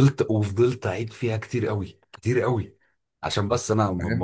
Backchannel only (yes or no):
no